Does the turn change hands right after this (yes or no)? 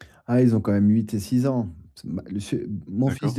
no